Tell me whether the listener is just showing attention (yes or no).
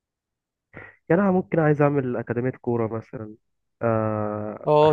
no